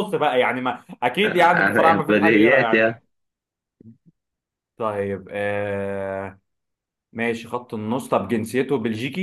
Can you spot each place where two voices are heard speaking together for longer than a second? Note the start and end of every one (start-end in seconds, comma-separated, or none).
1.2-2.9